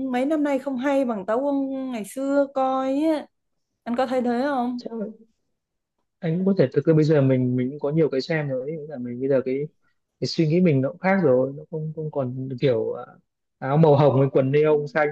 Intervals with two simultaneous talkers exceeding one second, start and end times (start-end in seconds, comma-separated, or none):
none